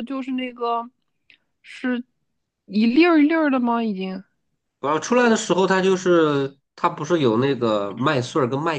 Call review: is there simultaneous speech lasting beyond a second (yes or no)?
no